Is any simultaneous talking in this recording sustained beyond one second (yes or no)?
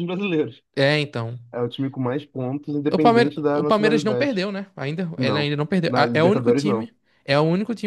yes